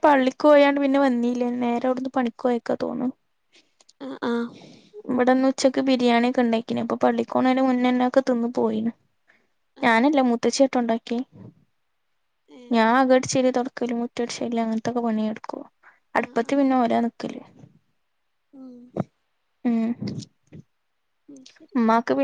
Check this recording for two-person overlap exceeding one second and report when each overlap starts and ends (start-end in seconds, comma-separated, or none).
none